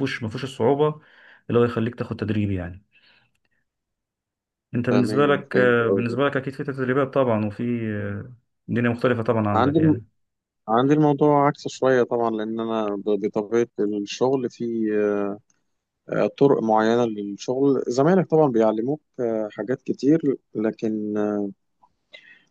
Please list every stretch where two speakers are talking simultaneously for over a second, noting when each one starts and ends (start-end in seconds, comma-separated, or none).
4.9-6.2